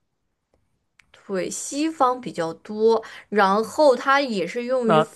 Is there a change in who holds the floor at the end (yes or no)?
no